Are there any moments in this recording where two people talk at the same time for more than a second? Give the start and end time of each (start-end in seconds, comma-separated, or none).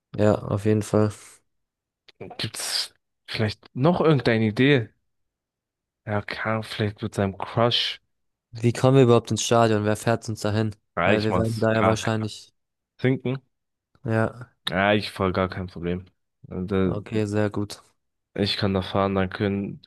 10.9-12.2